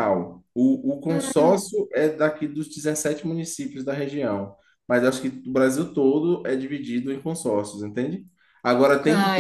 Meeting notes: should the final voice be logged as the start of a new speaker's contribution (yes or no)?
no